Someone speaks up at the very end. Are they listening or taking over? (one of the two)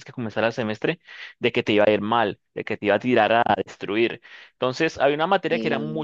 listening